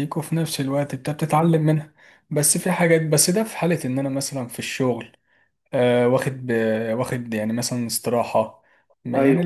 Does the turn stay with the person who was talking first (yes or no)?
yes